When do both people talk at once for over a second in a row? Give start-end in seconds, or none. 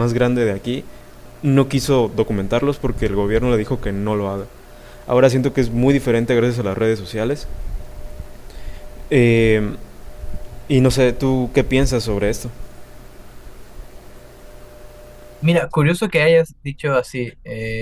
none